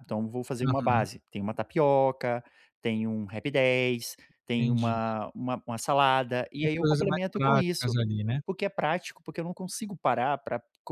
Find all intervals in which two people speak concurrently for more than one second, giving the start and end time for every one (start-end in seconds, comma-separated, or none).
6.6-8.0